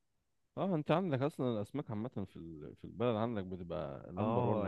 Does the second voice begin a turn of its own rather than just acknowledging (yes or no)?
yes